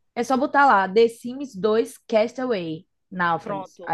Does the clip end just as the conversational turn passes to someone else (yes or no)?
yes